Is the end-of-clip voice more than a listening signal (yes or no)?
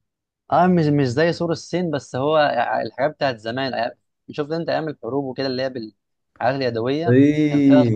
yes